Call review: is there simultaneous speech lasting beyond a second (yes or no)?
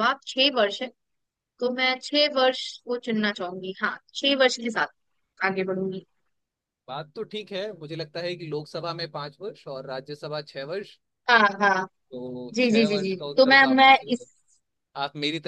yes